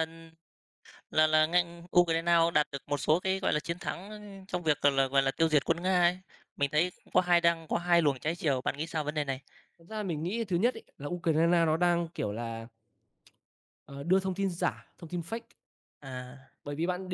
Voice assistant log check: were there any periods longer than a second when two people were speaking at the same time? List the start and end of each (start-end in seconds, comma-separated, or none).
none